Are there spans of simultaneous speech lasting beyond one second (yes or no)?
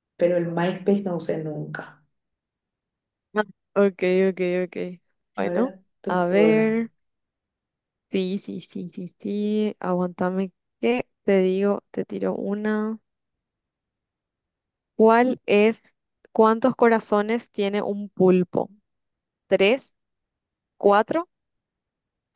yes